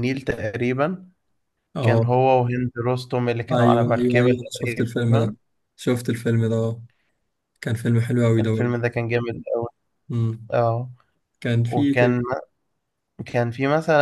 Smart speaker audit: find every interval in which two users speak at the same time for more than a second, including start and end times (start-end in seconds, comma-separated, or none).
3.5-5.3